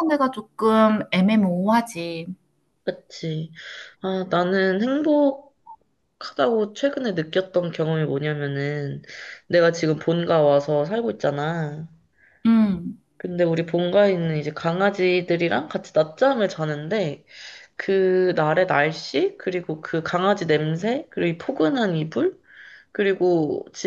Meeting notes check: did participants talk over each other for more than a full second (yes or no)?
no